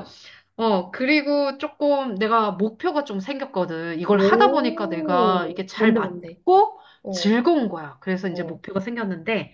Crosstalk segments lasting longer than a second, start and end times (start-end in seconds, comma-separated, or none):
4.1-6.4